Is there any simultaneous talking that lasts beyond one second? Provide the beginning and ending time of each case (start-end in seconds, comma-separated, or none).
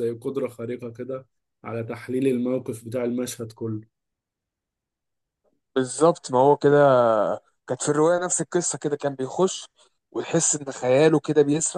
none